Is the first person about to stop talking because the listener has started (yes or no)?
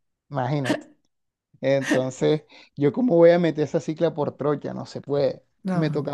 no